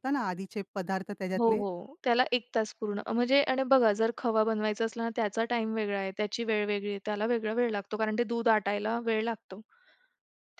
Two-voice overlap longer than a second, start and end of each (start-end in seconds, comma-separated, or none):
none